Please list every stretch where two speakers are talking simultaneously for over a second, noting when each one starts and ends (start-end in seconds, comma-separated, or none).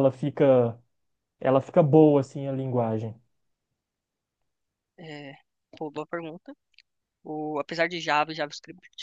none